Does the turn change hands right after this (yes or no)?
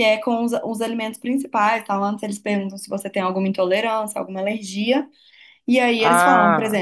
no